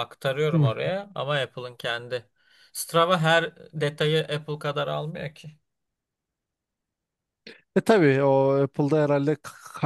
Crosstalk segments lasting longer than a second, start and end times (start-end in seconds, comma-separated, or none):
none